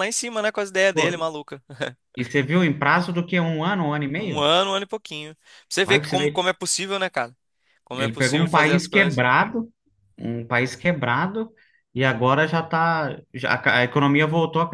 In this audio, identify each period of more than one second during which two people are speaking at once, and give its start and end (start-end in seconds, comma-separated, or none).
8.0-9.2